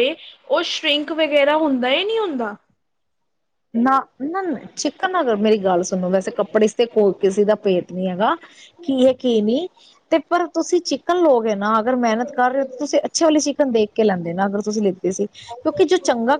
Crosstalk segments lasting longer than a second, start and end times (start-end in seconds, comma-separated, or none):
none